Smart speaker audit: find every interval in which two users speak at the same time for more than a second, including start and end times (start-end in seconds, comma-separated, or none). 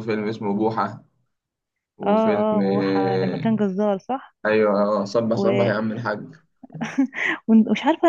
2.1-3.5